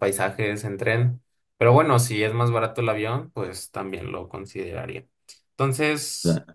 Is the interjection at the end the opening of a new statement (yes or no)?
no